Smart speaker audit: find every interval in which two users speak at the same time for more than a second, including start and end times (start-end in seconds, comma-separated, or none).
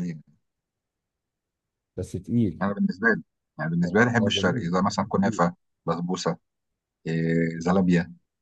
3.8-5.4